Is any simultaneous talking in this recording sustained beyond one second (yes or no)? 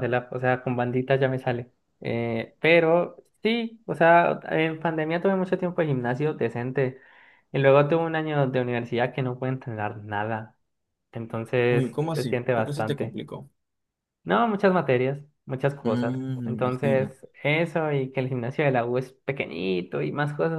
yes